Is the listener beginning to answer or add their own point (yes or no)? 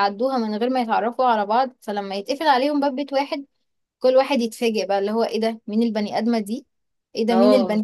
no